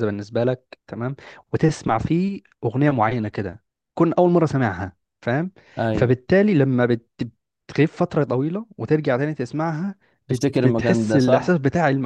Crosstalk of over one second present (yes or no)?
yes